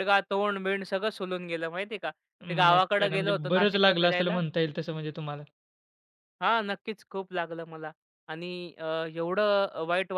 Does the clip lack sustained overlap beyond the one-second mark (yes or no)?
no